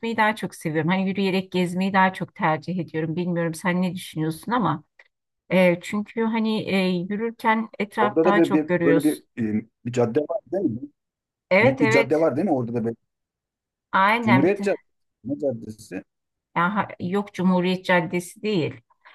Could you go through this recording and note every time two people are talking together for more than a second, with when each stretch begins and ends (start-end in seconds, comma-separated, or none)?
8.0-9.2